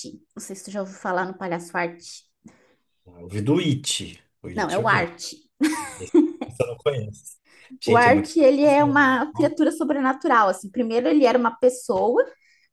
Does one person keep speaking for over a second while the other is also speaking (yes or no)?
yes